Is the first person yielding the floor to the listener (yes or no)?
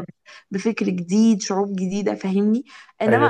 no